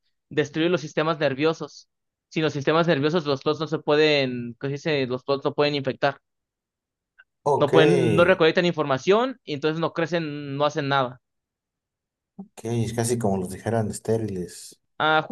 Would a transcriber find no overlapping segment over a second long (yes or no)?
yes